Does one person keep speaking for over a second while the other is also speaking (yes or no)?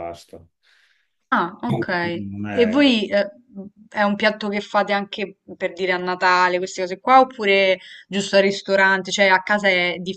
yes